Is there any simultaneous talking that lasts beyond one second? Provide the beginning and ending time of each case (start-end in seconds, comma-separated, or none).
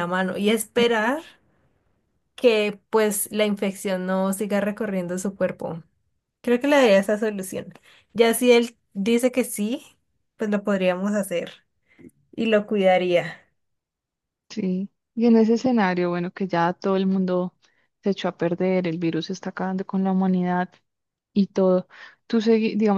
none